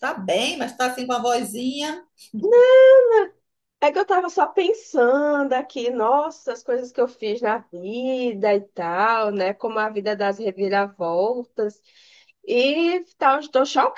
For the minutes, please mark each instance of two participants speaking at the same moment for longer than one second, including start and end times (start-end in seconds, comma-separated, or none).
none